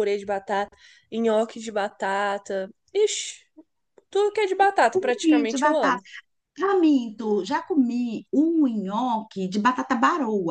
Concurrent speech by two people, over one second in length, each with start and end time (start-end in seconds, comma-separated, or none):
4.6-6.0